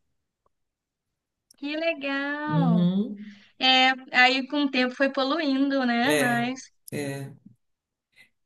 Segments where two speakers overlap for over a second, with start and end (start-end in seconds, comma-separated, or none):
none